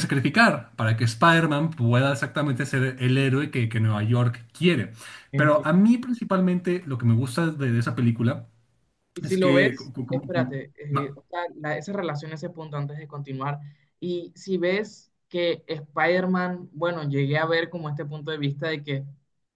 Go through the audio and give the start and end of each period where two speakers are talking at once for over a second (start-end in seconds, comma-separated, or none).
9.2-10.6